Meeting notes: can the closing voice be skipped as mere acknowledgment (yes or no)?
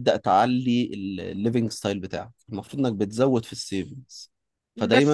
yes